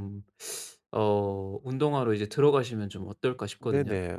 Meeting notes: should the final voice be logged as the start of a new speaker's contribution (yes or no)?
yes